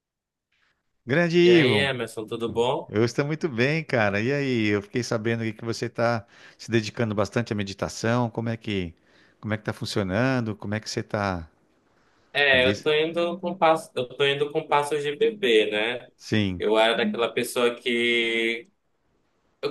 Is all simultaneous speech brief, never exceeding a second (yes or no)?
yes